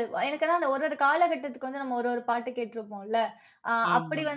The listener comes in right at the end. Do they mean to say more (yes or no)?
no